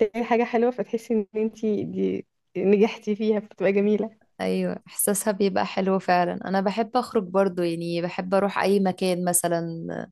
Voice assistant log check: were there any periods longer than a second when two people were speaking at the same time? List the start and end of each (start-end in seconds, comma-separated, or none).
none